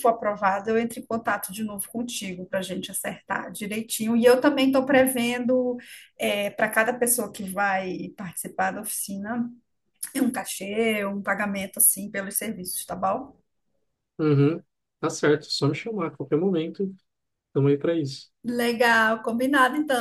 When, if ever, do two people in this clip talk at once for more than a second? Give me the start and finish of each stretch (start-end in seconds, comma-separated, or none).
none